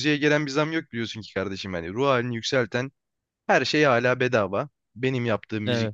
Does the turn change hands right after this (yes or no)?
no